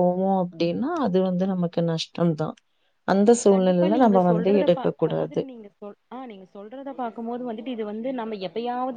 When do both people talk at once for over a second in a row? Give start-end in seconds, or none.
3.5-5.4